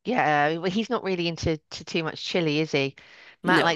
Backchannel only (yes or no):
yes